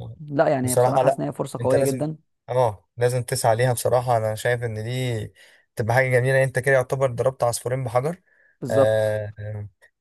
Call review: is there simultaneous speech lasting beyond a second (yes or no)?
yes